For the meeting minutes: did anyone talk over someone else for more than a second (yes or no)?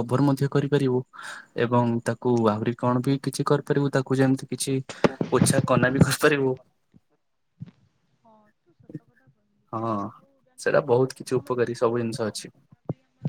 yes